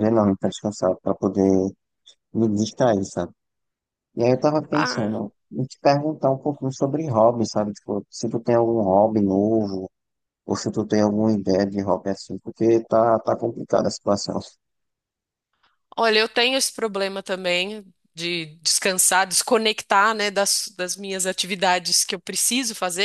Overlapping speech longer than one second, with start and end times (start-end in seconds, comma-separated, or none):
none